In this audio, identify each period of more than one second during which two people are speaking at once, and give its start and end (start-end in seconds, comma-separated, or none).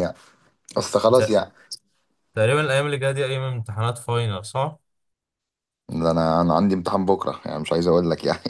none